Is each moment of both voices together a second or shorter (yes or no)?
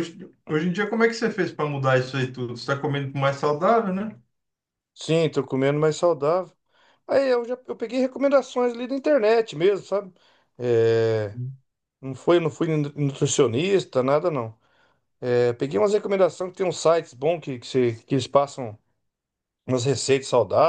yes